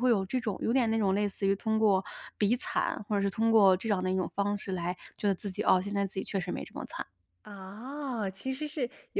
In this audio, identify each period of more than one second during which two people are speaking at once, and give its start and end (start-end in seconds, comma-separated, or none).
none